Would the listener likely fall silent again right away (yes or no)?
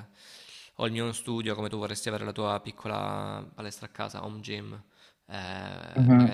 yes